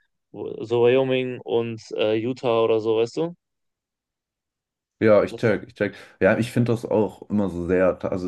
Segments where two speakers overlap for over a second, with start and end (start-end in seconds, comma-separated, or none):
none